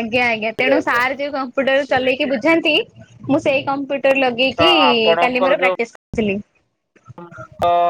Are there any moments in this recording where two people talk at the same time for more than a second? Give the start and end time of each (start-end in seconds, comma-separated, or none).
none